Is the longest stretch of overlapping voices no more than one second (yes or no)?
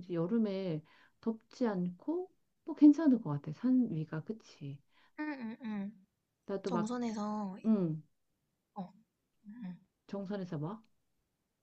yes